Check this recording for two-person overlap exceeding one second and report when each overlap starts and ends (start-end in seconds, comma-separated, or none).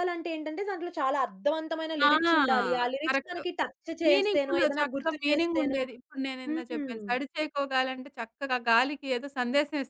4.1-5.8